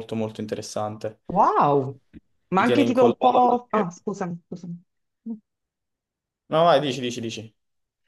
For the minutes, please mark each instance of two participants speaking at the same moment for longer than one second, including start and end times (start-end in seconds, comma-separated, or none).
2.5-4.0